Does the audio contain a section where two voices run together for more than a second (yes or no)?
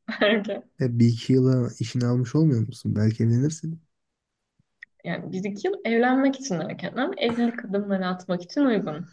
no